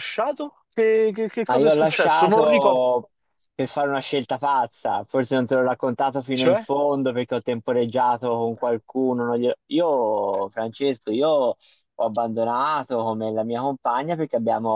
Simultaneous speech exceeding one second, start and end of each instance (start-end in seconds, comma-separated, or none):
1.4-2.8